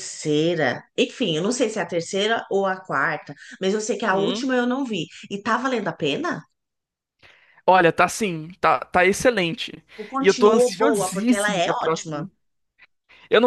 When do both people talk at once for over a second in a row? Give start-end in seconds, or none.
10.2-12.3